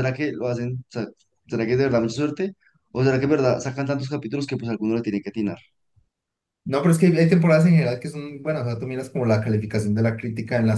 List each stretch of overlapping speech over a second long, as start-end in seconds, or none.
none